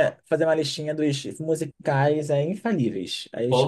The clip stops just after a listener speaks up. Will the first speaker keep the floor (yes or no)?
no